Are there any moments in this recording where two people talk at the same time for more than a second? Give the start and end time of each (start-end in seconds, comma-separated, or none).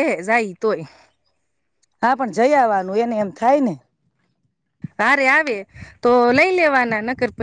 none